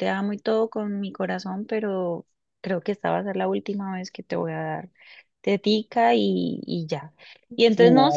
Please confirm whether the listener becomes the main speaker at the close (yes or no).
no